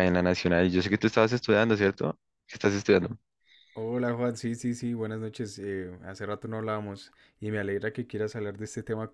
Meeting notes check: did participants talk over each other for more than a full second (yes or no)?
no